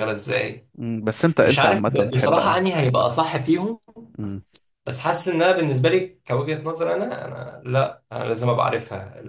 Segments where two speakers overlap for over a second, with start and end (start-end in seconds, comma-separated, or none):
1.4-2.6